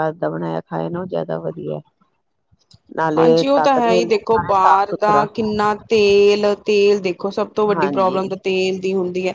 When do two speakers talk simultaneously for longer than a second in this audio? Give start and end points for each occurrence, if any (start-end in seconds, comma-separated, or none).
3.2-5.2